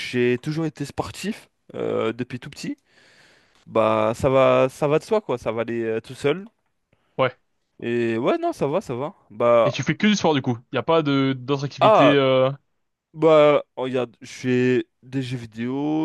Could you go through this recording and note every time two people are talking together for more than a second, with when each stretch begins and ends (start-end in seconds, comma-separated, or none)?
none